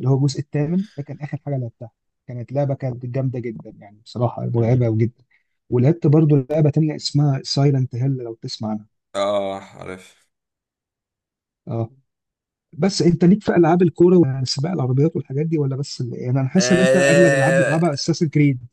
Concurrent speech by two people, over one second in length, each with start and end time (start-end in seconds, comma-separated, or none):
16.6-17.8